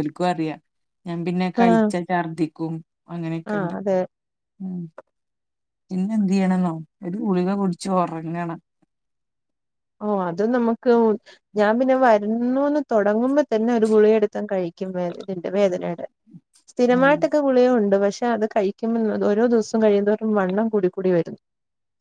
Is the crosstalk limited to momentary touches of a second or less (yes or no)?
yes